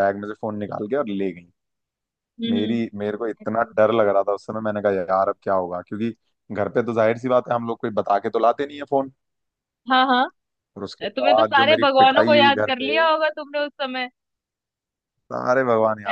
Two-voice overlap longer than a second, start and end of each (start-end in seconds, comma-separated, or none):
11.2-12.9